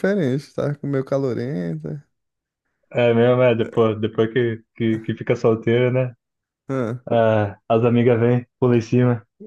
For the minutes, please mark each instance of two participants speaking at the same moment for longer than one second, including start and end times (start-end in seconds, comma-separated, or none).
none